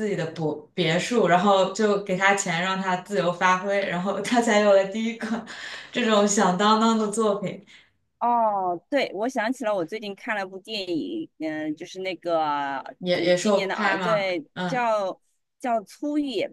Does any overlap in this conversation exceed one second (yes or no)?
yes